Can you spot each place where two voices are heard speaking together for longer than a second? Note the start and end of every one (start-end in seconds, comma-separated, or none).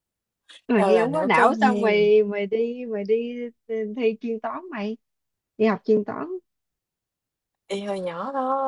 0.8-2.1